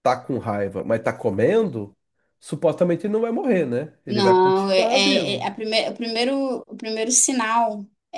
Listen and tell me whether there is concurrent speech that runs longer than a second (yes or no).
yes